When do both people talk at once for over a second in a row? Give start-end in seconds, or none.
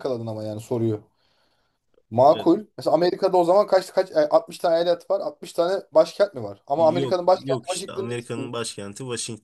6.8-8.5